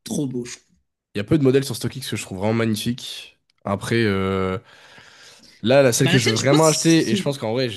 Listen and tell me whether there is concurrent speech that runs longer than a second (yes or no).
yes